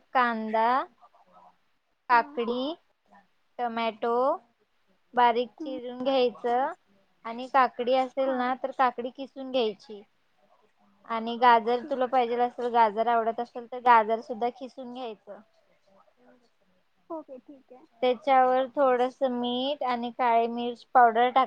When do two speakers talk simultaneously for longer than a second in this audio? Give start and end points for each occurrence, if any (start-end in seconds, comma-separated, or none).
none